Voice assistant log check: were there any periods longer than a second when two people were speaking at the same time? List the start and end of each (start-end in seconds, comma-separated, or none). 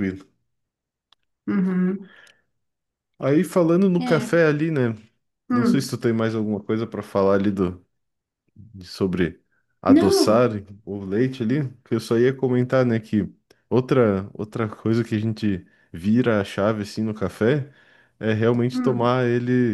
none